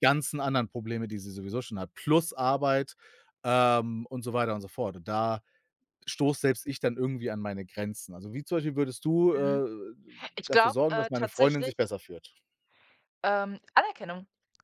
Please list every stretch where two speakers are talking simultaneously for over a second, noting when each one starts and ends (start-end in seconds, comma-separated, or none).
10.5-11.7